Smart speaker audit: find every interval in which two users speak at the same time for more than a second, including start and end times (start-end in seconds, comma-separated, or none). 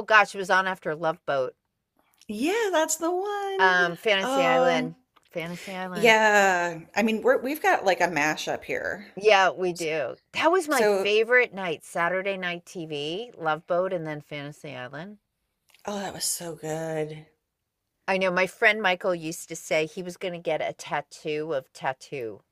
3.6-4.9